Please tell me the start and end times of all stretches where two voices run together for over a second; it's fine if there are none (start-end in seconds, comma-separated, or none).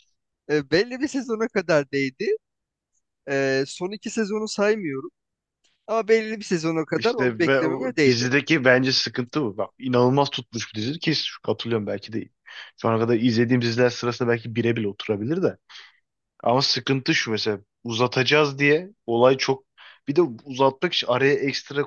7.0-8.3